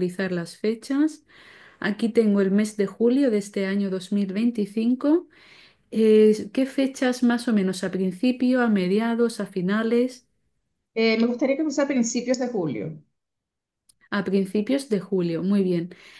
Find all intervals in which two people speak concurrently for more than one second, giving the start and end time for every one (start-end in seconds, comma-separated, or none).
none